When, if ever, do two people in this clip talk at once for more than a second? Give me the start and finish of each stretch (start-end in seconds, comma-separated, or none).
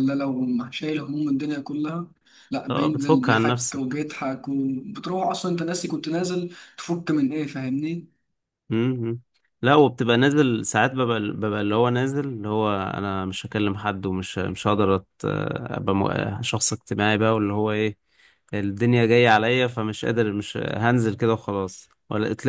2.7-4.0